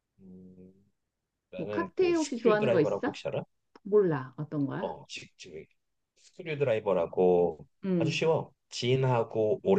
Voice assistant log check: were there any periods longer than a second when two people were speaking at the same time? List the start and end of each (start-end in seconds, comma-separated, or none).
1.6-3.2